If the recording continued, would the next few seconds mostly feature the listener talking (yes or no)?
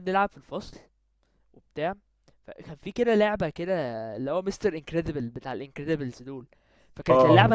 no